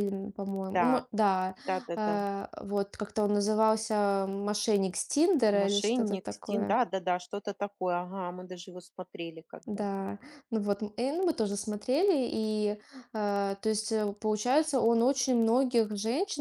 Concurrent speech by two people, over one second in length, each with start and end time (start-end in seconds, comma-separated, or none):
5.5-6.8